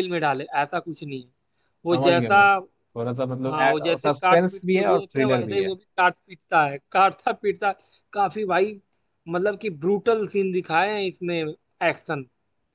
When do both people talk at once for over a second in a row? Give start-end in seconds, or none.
3.5-5.7